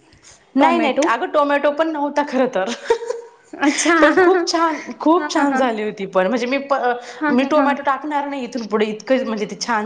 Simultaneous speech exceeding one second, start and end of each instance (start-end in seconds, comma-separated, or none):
4.0-5.6